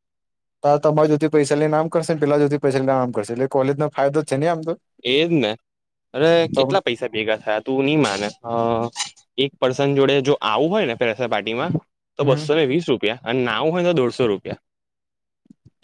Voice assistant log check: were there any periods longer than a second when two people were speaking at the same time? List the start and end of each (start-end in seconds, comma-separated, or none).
none